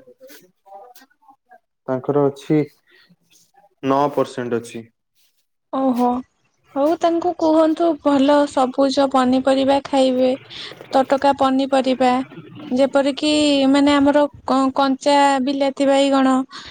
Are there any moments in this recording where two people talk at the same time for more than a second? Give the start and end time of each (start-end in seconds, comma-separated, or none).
none